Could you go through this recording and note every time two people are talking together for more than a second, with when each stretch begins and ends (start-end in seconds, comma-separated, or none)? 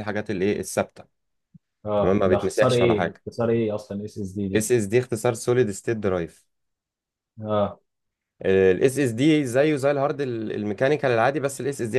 2.0-3.2